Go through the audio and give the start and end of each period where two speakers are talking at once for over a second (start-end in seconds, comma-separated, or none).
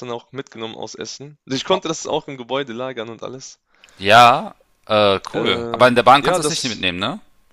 5.3-6.9